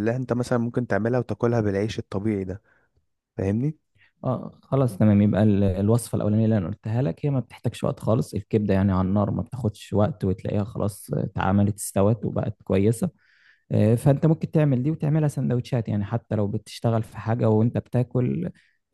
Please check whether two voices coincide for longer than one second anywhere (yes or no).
no